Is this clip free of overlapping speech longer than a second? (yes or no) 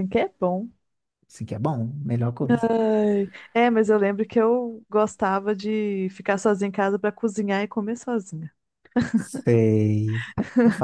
yes